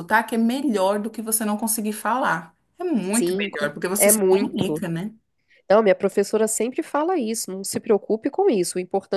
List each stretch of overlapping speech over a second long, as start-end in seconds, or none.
3.1-4.8